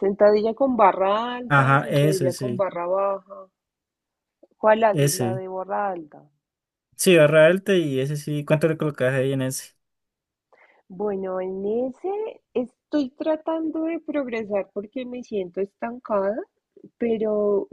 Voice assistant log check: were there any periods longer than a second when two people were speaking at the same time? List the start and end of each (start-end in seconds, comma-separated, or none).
1.5-2.7